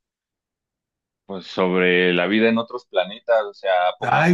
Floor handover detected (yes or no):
no